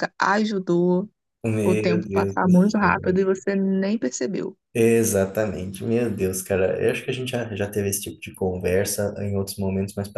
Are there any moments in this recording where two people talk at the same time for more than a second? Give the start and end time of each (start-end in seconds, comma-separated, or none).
1.6-3.2